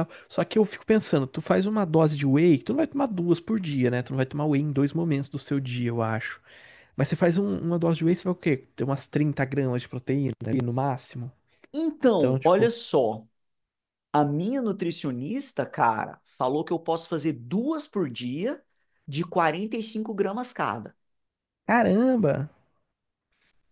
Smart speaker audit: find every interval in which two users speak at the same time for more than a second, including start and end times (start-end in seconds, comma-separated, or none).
none